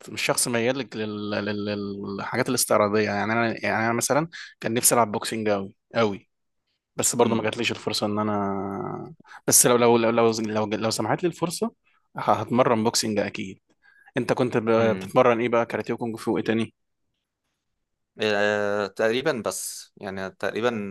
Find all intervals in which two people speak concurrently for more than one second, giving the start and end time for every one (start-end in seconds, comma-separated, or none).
none